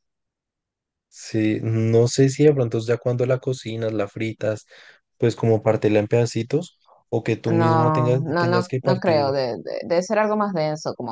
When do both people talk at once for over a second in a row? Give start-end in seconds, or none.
7.4-9.3